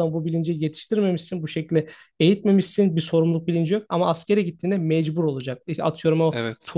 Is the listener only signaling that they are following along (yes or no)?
yes